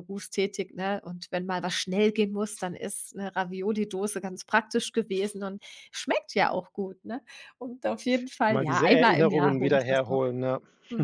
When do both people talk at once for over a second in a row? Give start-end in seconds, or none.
8.5-10.2